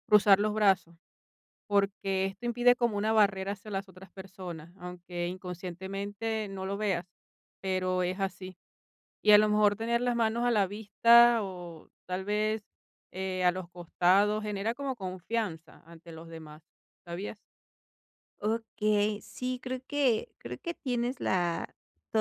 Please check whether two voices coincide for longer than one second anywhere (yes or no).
no